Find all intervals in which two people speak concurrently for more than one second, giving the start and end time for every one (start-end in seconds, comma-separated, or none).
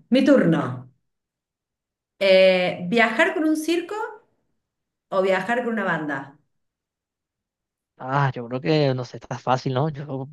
none